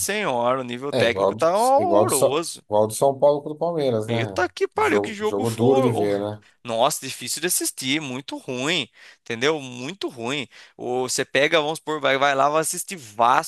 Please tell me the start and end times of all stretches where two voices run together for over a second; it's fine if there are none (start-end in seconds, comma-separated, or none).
0.9-2.6, 4.1-6.3